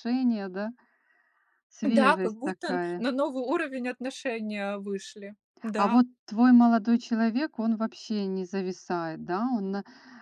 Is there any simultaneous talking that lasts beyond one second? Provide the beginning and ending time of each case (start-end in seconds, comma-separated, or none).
1.8-3.1